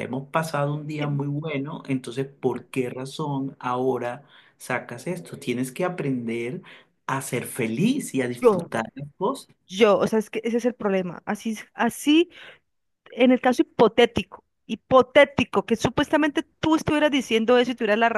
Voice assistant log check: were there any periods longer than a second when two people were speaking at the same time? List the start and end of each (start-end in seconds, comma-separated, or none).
none